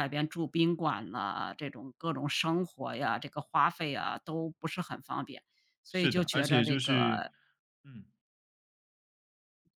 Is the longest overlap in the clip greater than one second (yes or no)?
yes